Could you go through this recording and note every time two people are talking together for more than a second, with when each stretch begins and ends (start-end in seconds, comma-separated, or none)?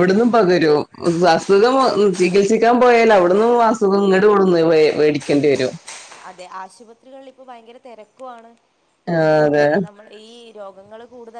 none